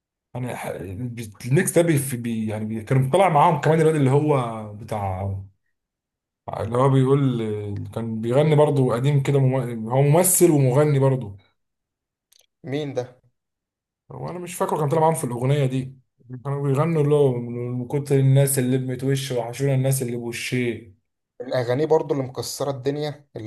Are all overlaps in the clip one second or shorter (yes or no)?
yes